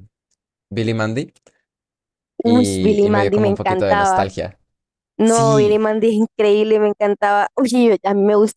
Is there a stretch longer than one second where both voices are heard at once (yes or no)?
yes